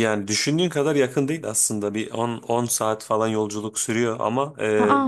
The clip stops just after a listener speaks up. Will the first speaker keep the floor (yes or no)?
yes